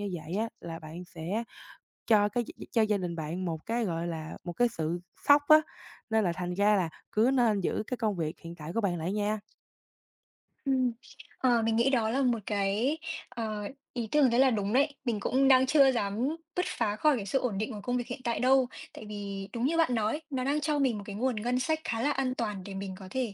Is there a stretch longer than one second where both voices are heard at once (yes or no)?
no